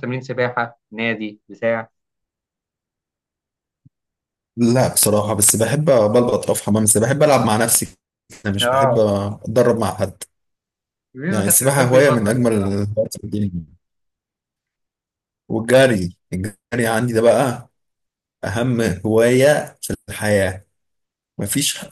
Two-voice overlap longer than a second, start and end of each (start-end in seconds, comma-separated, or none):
11.3-12.8